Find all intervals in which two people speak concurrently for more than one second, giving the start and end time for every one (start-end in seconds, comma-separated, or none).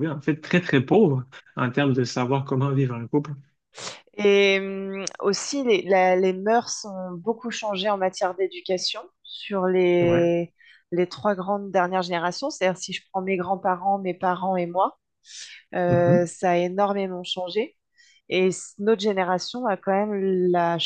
none